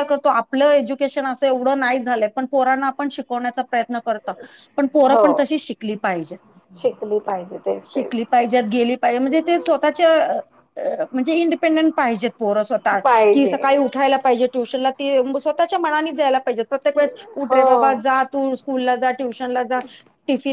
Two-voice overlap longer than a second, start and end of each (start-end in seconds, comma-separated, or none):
none